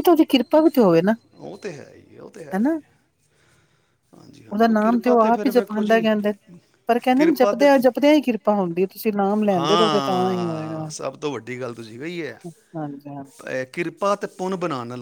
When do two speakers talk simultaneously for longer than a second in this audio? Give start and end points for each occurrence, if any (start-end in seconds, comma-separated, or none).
4.5-6.0, 9.6-10.8